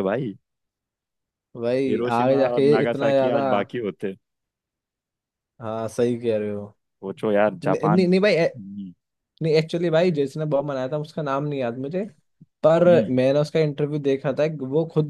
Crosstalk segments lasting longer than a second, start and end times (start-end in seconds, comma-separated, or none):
1.9-3.4